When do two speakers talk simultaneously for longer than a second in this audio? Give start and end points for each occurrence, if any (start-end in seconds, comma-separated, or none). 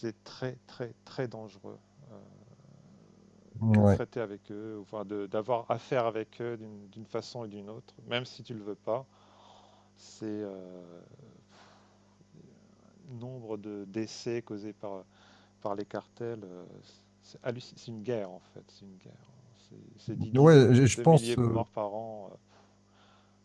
20.3-21.6